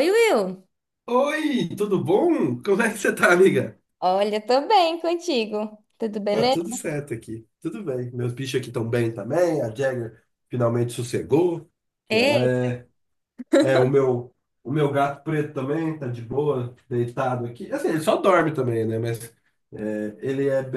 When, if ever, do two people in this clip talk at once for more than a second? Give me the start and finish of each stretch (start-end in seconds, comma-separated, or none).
none